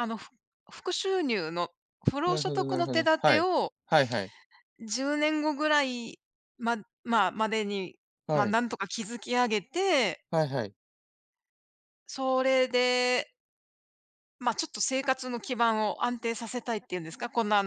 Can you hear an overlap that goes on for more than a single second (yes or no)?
yes